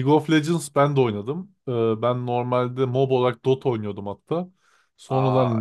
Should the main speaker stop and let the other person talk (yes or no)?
no